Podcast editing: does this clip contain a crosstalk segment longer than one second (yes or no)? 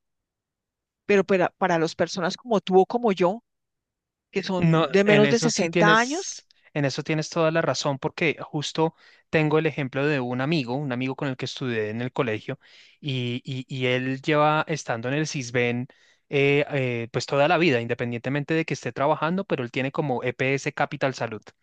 yes